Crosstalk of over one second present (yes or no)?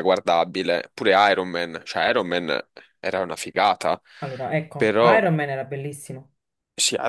no